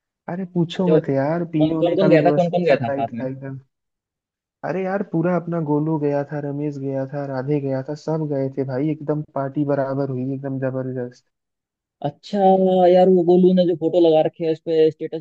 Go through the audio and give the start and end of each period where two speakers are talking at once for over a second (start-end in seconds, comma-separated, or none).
0.8-3.2